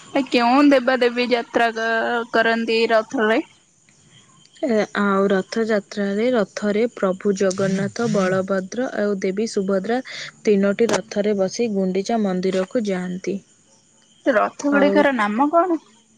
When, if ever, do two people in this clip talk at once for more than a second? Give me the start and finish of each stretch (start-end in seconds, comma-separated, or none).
none